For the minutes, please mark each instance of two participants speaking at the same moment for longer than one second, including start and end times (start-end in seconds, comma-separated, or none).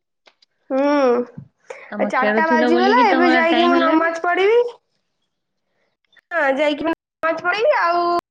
1.9-4.1